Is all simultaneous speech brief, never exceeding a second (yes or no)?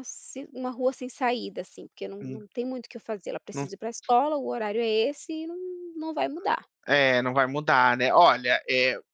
yes